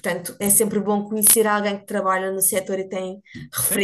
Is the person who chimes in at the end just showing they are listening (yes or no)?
no